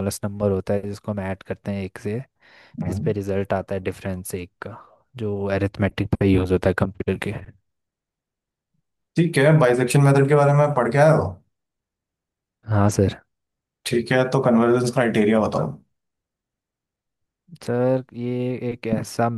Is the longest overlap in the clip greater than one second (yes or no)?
no